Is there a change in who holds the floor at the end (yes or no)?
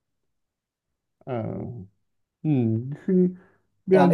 yes